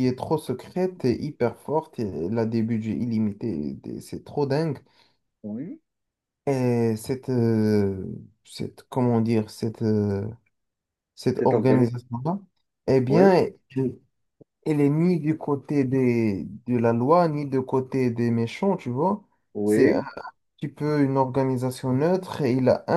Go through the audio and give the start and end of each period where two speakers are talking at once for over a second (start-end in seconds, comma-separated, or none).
none